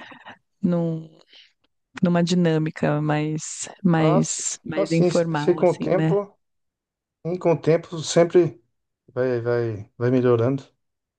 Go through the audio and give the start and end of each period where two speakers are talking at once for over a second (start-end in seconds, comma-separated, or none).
4.0-6.2